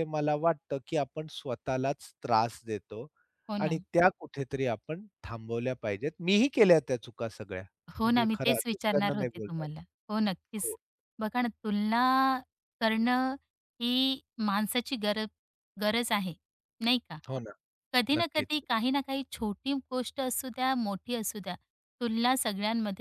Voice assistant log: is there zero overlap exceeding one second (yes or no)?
no